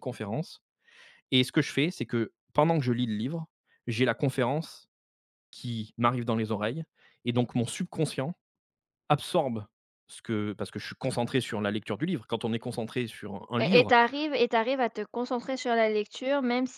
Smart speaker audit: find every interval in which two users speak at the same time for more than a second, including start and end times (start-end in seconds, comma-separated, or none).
none